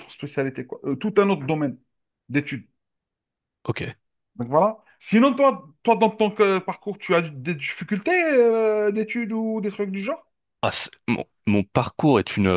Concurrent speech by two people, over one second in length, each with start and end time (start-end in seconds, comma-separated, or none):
none